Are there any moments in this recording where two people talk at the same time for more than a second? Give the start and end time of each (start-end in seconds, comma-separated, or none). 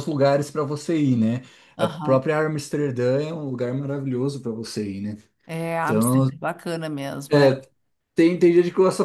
none